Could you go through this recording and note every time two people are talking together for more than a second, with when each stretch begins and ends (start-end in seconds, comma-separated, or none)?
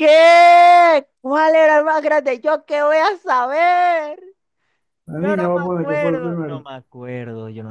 5.1-6.6